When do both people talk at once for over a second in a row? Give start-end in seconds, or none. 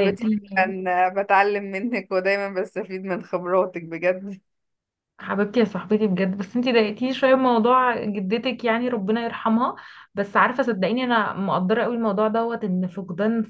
none